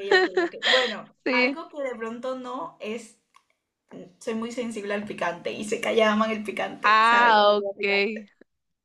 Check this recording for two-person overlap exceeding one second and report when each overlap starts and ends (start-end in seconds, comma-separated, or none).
6.8-8.3